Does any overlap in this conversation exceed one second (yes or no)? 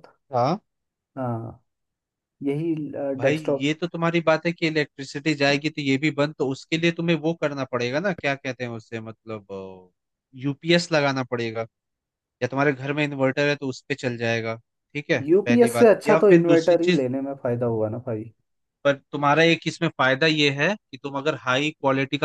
yes